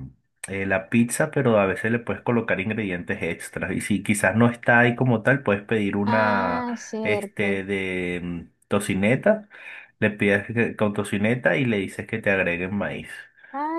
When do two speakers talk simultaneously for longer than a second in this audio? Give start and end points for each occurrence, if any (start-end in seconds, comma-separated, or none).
6.0-7.6